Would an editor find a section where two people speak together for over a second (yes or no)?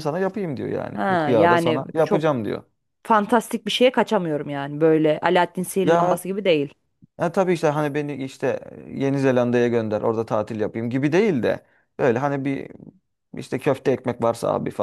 yes